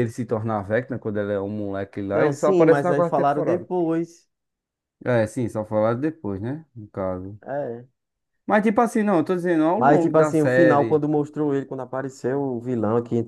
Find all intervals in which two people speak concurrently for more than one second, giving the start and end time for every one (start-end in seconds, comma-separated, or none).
2.1-3.7, 9.8-11.0